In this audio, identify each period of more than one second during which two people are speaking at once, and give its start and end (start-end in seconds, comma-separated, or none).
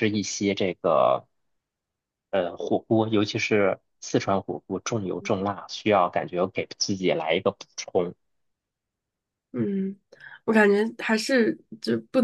none